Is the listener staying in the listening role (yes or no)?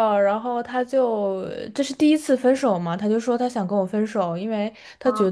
yes